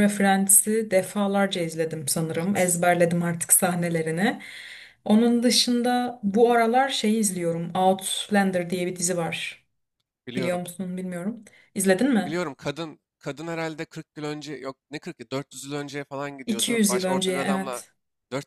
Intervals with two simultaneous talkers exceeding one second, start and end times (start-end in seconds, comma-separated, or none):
16.5-17.8